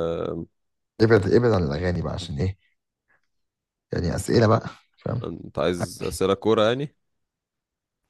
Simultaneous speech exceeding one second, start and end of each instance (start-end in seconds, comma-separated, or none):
none